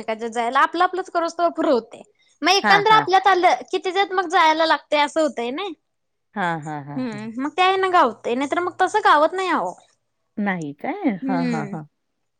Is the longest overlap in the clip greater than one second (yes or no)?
no